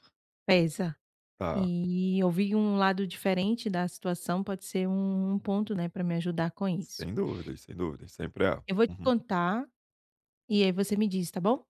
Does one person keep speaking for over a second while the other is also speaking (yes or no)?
no